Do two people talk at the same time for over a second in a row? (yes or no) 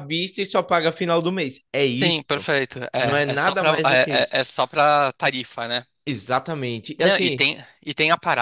yes